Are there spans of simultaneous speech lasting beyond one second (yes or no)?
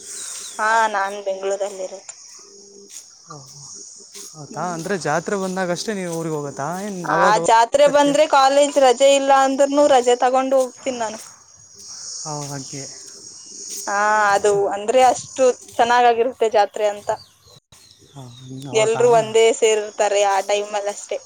no